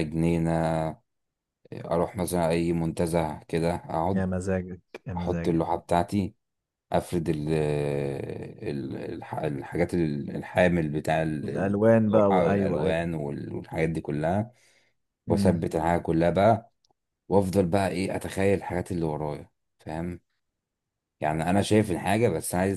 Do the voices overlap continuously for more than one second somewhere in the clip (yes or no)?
yes